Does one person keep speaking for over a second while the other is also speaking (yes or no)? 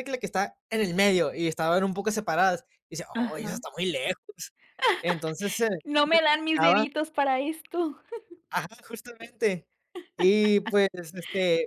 no